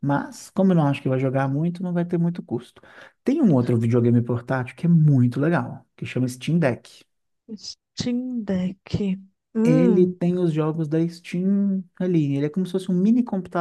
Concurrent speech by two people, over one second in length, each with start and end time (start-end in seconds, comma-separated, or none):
none